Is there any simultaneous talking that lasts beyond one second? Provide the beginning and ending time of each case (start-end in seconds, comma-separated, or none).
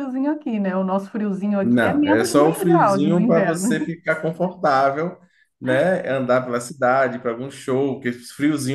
1.6-3.9